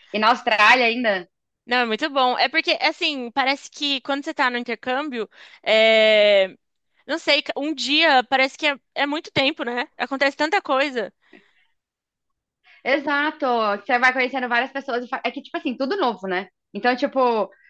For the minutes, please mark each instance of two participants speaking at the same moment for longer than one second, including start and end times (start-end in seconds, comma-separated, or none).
none